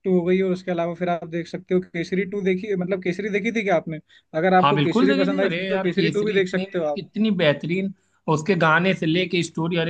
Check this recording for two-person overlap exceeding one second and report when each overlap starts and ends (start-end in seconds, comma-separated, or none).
4.6-6.7